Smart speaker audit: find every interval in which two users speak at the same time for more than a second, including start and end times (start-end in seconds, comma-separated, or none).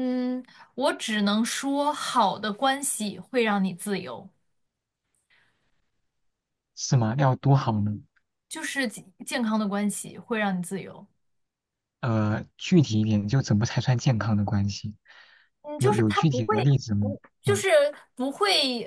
15.8-17.6